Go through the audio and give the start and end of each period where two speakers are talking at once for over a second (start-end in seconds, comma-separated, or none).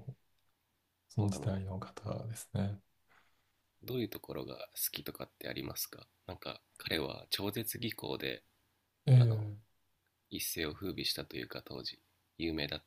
none